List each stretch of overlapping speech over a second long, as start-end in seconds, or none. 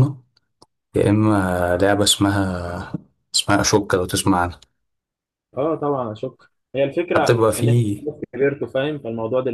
none